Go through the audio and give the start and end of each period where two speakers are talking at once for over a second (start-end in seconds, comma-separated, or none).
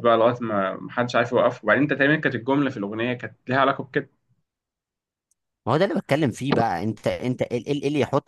none